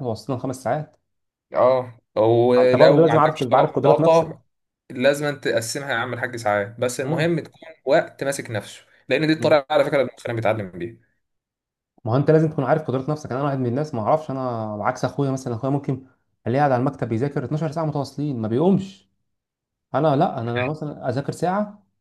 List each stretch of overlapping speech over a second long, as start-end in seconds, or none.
2.6-4.3